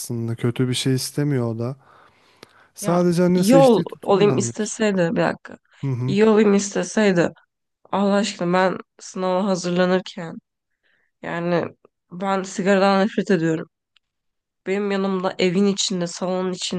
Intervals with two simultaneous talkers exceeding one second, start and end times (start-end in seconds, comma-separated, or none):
2.8-4.8